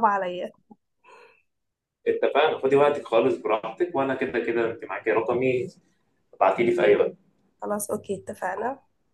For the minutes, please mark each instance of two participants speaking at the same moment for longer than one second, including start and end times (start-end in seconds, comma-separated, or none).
none